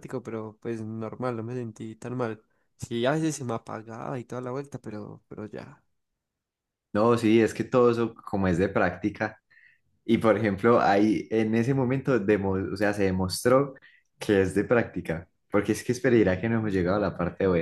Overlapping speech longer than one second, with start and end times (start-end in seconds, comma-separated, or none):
none